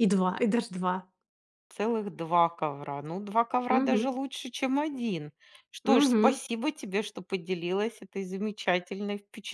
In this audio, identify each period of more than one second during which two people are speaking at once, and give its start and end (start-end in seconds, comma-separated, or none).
none